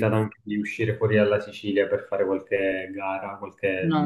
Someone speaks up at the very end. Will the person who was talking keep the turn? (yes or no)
no